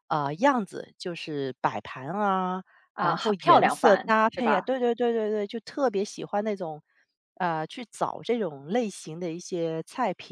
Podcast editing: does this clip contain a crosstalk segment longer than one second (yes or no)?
yes